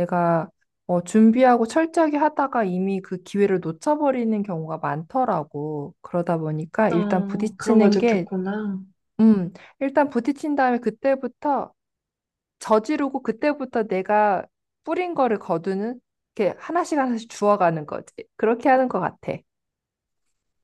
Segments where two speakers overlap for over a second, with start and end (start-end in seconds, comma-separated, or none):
6.9-8.3